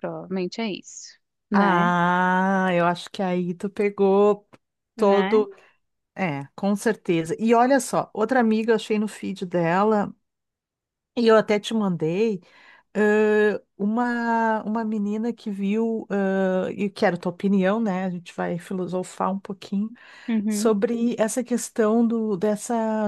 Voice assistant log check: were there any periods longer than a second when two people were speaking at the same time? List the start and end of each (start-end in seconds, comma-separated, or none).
none